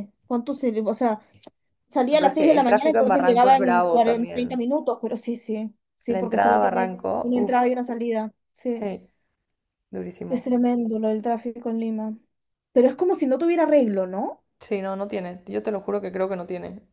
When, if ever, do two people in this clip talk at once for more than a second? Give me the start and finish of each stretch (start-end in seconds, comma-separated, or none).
2.1-4.6, 6.1-7.6